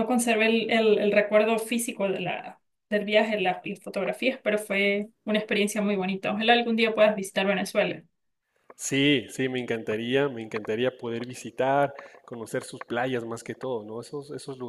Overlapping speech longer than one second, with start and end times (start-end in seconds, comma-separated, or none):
none